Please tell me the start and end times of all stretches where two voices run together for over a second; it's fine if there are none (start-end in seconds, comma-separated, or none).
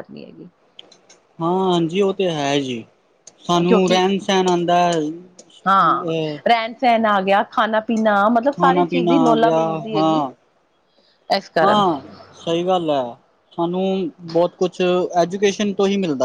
8.6-10.2